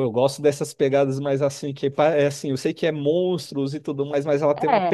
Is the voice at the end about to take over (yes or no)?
no